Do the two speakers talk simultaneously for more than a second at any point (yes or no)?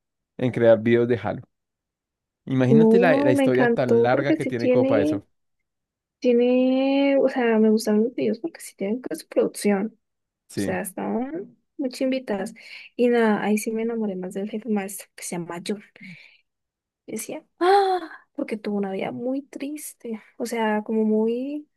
yes